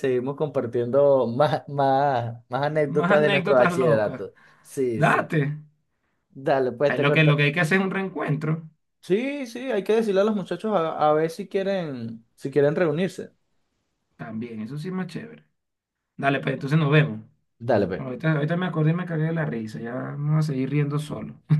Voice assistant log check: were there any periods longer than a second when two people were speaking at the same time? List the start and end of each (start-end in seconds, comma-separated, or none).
2.9-4.2